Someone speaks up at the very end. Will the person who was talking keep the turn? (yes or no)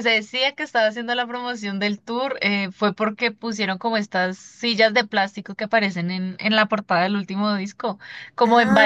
yes